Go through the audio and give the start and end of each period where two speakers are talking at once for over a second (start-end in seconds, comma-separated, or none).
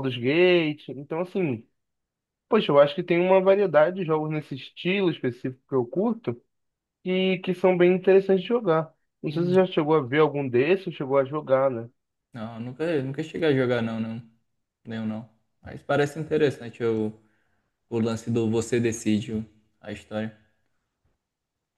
none